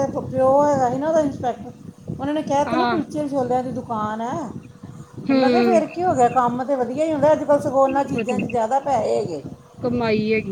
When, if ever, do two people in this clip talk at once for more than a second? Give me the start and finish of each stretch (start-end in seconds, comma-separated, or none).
none